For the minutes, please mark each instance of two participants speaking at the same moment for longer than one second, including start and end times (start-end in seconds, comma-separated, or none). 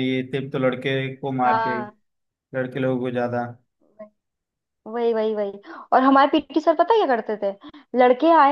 none